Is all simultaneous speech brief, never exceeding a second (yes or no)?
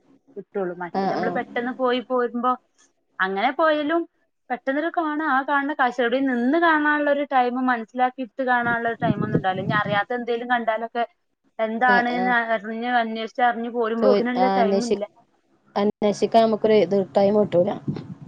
yes